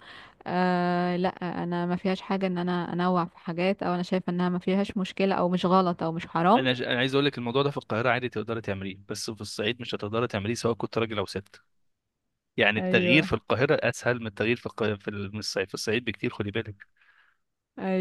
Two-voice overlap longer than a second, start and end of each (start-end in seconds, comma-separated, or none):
none